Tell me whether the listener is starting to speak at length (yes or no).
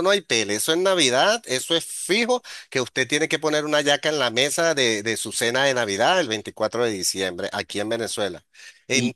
yes